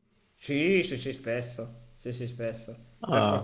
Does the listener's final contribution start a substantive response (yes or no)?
no